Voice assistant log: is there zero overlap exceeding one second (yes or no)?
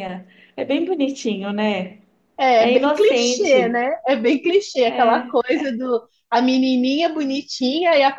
no